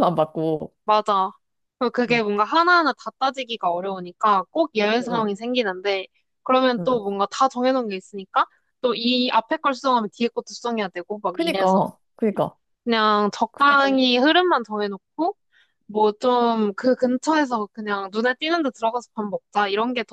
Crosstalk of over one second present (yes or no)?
no